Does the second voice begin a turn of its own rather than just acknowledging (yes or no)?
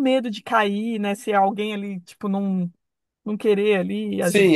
yes